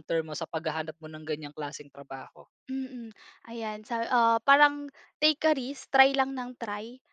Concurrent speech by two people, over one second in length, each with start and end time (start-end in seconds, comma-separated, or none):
none